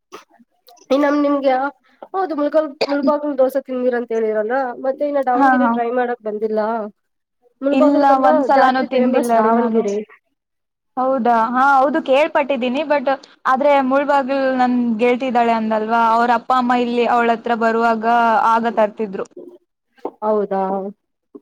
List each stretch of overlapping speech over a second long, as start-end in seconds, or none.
7.8-9.8